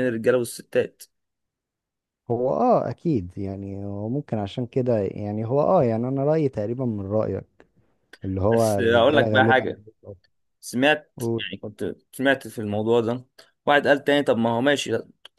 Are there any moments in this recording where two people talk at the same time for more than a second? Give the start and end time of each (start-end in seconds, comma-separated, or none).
8.5-9.7